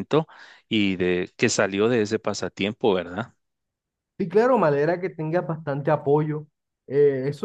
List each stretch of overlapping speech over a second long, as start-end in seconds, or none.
none